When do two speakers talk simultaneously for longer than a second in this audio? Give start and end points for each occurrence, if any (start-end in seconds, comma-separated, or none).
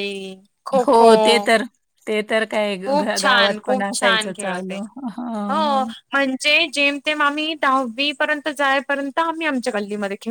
3.2-4.8